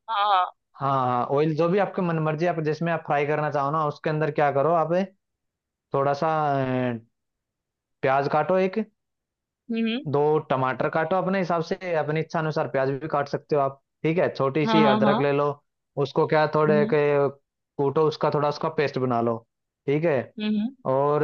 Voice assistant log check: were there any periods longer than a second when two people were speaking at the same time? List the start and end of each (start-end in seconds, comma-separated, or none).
none